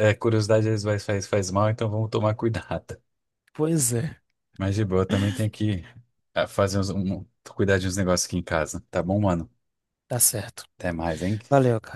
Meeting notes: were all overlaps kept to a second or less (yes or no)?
yes